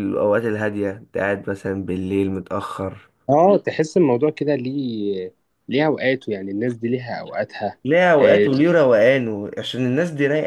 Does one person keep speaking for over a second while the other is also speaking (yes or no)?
no